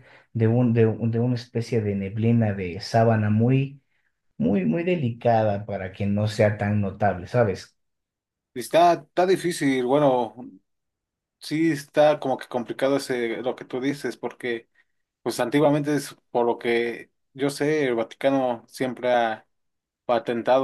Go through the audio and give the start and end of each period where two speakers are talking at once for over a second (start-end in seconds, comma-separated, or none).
none